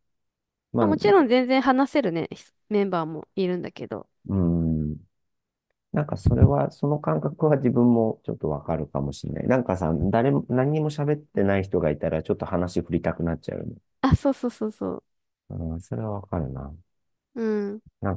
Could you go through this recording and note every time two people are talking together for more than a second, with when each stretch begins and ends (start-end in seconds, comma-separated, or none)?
none